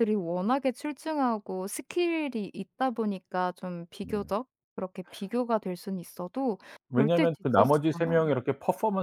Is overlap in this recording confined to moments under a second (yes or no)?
no